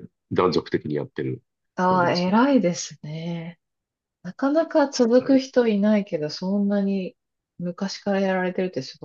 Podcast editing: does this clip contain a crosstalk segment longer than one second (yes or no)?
no